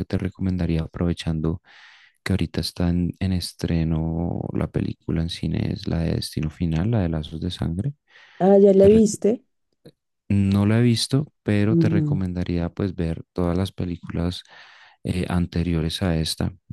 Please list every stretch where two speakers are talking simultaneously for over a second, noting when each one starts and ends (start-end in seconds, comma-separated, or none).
none